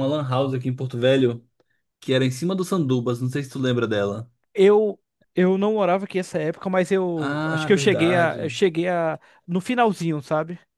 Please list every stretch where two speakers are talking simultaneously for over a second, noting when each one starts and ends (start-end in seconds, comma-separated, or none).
7.2-8.6